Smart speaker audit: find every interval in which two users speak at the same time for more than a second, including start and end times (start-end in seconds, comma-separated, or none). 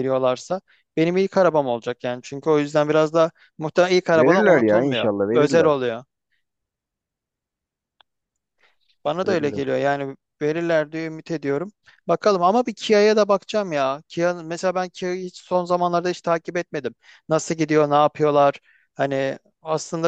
4.1-5.7